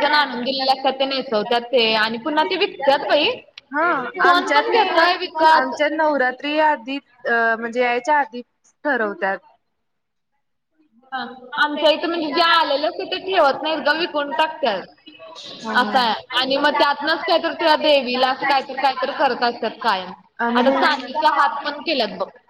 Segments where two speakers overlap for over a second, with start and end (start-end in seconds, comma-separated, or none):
none